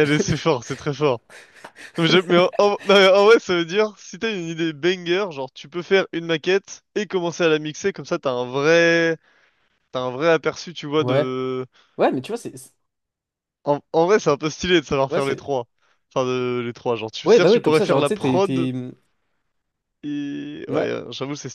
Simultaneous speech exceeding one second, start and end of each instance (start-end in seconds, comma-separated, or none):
17.2-18.7